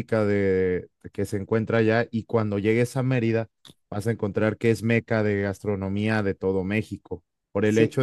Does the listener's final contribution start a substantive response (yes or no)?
no